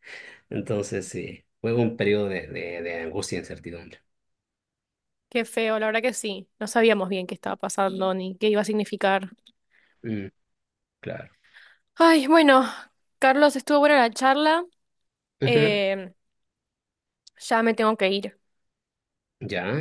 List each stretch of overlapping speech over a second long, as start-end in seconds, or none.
none